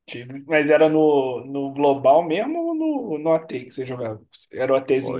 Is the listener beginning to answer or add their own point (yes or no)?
yes